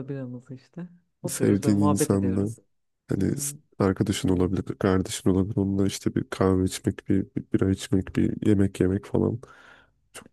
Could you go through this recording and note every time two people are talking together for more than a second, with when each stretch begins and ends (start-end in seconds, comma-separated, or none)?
1.3-2.5